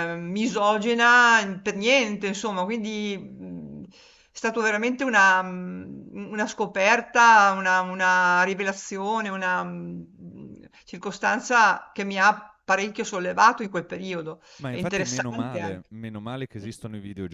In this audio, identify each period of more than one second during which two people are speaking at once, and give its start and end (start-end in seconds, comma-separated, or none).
14.6-15.9